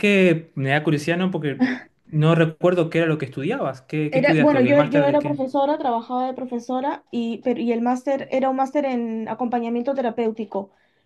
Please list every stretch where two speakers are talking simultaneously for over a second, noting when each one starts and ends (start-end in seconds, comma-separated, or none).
4.1-5.4